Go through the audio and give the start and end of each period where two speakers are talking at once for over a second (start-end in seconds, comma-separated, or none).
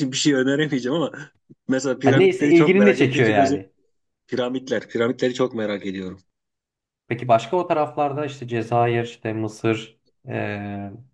2.0-3.6